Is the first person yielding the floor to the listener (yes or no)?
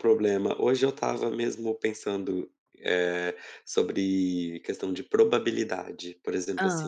no